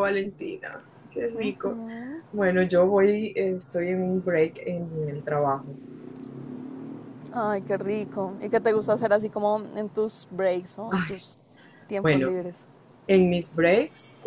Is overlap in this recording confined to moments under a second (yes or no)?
yes